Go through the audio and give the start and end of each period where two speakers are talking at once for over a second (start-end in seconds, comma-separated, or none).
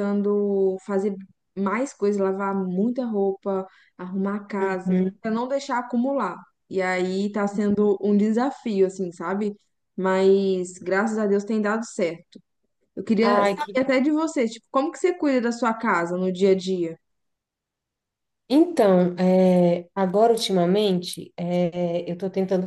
none